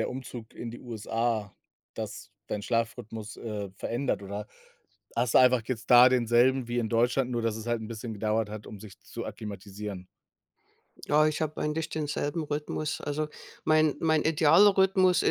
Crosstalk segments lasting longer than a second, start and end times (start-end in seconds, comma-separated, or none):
none